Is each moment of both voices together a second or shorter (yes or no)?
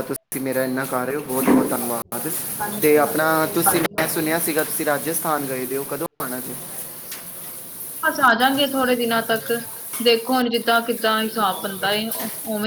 no